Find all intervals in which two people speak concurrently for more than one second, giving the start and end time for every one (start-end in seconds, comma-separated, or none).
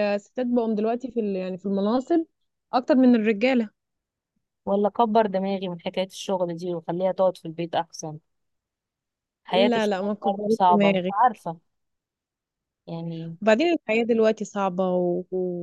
9.5-11.1